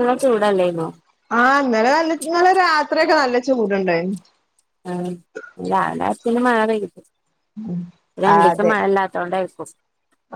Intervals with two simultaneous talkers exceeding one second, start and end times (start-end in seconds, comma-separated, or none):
none